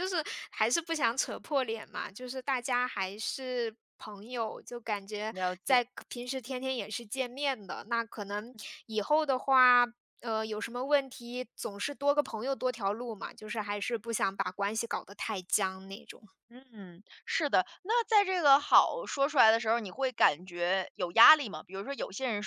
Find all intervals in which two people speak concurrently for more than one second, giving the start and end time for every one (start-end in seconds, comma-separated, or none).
none